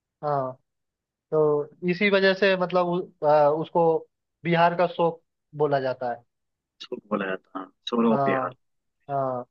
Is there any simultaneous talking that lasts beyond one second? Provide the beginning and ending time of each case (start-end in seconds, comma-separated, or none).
none